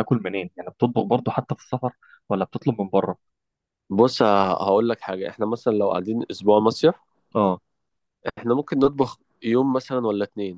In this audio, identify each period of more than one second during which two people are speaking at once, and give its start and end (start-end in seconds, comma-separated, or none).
none